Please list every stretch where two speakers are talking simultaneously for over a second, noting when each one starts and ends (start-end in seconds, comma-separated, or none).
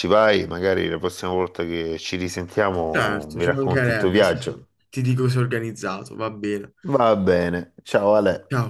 2.9-4.7